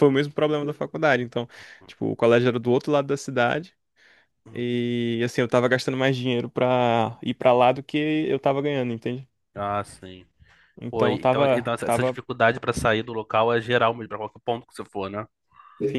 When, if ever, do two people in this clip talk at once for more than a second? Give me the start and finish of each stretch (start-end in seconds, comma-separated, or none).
10.9-12.2